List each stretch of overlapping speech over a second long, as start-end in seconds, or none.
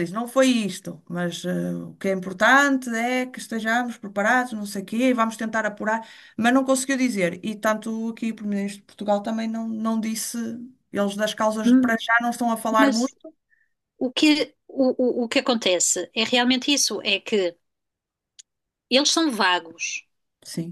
none